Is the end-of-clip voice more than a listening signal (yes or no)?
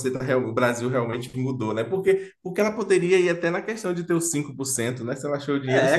yes